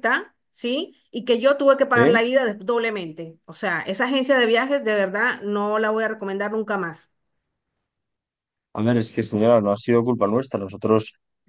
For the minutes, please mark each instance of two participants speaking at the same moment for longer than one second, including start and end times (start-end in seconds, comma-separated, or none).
none